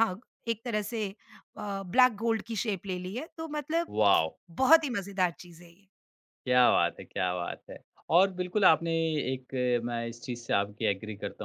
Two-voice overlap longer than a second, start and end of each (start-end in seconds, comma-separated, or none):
none